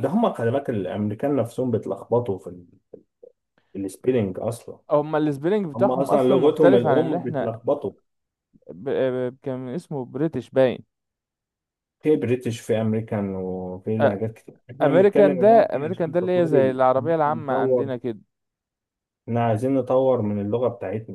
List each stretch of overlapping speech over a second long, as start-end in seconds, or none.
5.7-7.5, 14.8-17.9